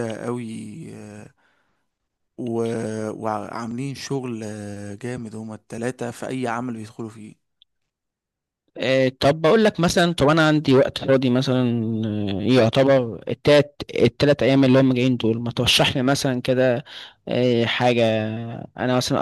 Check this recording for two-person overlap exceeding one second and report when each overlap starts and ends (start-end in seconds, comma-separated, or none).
none